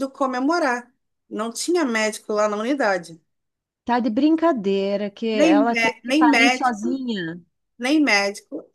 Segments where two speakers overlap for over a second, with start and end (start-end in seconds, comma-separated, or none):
5.3-7.0